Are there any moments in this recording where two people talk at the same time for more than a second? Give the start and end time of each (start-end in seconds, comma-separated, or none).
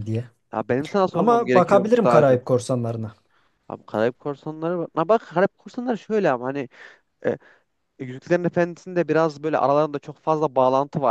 1.1-2.5